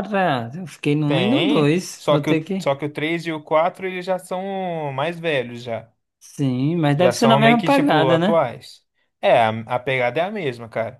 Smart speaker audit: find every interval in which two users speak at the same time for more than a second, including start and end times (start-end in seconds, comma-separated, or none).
1.1-2.7, 7.0-8.4